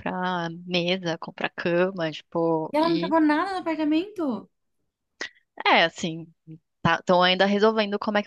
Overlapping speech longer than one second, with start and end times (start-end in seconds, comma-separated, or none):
none